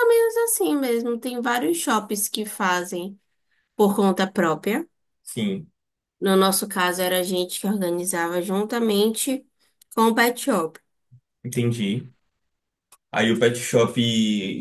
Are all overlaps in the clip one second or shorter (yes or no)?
yes